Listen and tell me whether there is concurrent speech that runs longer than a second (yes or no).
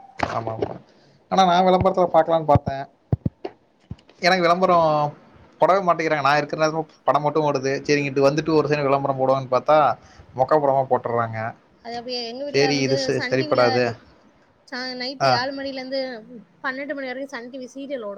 no